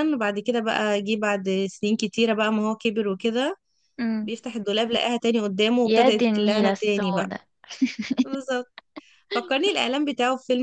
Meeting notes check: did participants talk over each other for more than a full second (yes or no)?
yes